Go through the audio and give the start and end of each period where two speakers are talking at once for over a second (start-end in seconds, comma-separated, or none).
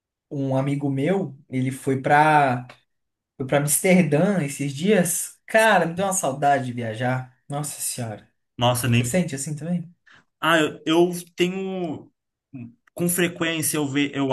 none